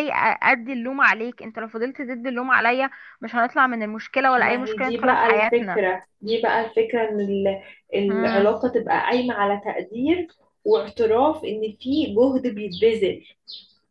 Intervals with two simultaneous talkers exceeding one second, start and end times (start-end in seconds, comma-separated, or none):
4.4-5.8